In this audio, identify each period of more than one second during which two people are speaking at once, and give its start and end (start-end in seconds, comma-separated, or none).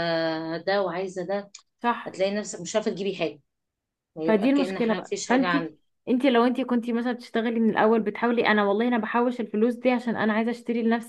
4.2-5.8